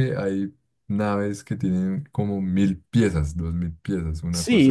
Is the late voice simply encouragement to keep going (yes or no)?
no